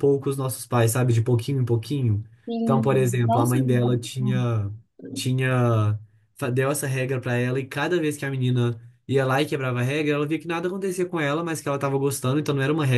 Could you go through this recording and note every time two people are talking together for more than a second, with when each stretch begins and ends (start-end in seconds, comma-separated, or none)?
2.6-4.0